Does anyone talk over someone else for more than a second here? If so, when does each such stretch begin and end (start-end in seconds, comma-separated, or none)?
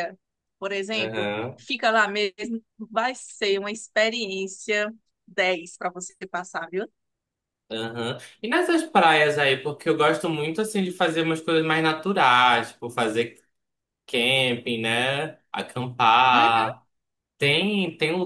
none